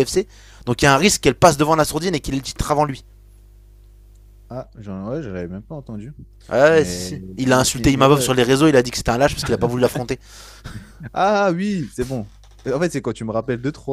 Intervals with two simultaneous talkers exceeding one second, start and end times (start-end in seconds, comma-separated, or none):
6.7-8.3